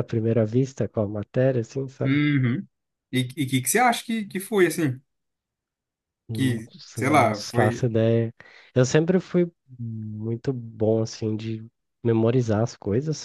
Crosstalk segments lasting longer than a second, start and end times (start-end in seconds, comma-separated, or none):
6.3-7.8